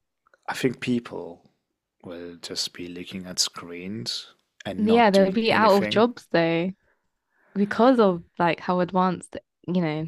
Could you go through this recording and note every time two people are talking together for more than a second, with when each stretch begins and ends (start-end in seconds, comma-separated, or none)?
4.8-6.0